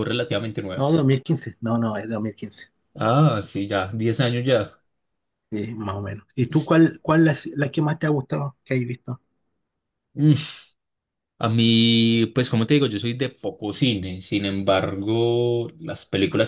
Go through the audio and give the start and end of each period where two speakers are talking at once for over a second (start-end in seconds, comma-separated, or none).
none